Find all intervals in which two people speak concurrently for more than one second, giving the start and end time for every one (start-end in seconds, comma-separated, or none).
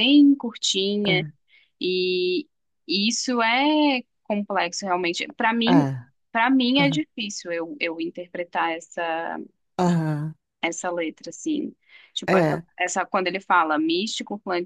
none